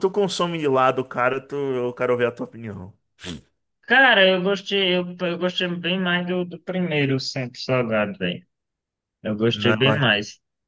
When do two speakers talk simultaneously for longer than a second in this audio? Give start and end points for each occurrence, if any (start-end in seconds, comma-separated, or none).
none